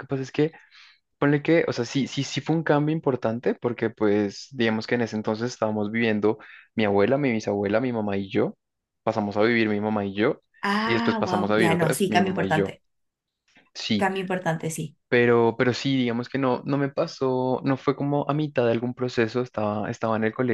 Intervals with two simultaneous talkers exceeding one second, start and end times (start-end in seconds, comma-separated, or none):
10.8-12.7